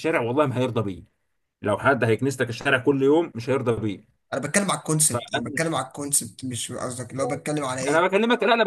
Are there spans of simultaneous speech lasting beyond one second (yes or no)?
no